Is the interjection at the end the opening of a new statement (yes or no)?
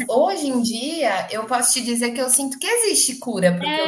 yes